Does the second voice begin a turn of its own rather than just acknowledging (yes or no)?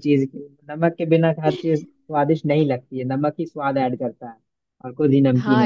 yes